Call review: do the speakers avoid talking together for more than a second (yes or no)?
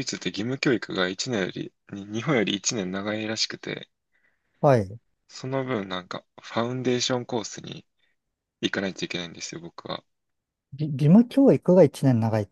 yes